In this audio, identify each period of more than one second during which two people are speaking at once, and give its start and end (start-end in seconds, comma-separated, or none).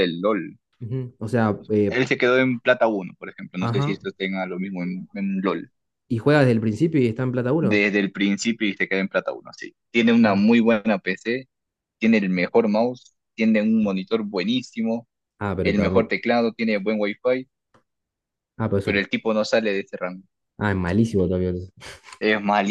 none